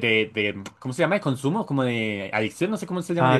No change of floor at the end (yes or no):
no